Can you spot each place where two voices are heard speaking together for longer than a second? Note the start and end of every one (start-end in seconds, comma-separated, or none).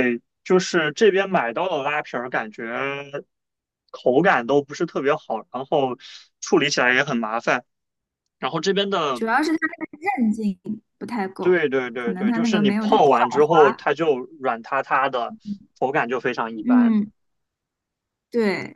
11.4-13.9